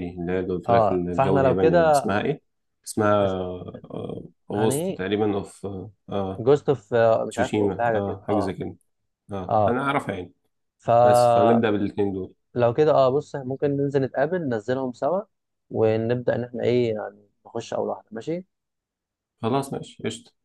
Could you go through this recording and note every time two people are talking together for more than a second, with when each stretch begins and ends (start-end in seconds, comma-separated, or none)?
0.7-2.1, 7.3-8.6